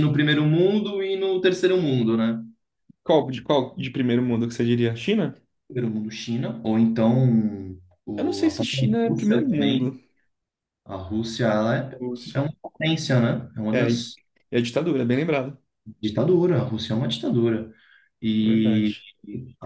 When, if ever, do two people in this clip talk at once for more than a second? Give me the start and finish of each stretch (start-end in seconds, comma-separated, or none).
8.2-10.0